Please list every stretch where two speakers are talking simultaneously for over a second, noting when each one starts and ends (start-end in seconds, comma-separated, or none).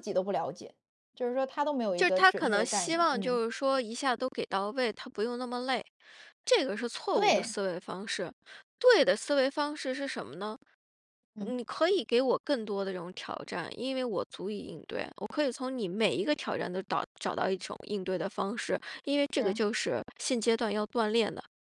2.0-3.4